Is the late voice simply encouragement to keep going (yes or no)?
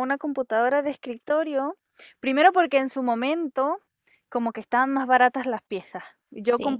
yes